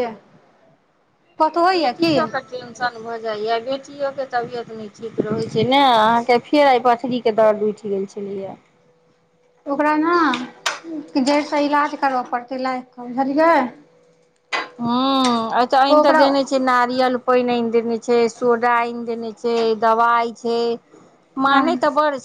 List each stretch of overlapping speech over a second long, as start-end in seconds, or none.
none